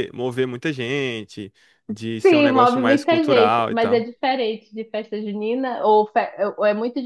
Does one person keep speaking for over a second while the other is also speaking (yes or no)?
yes